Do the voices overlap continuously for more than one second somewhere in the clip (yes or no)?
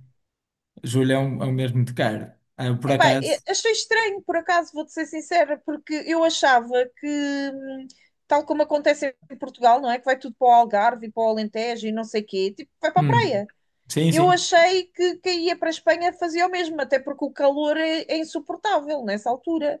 no